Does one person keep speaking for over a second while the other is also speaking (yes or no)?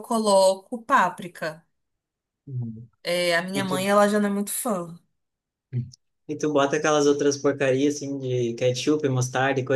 no